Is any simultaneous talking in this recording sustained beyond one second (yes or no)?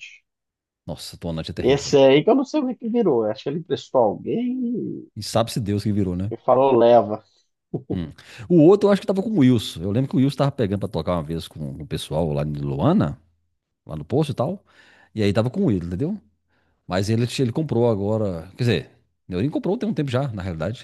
no